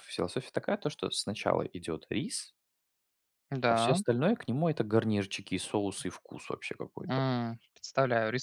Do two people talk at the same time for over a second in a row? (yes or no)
no